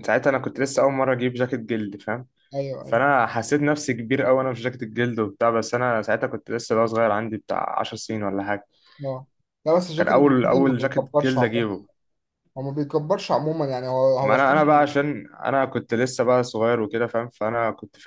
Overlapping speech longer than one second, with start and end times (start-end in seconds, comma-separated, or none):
10.0-11.7